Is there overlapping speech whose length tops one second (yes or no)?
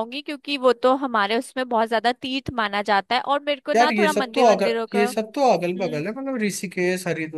yes